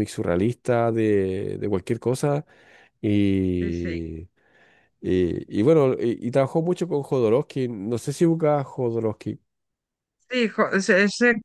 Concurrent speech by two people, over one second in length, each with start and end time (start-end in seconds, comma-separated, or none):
none